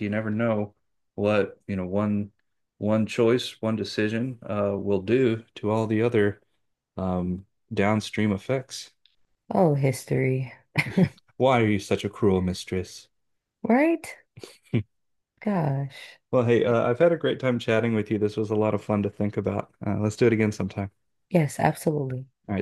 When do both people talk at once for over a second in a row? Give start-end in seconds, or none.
none